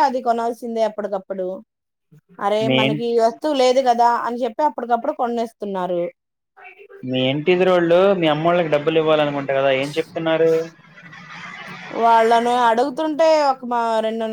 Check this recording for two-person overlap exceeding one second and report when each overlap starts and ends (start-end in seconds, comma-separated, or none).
none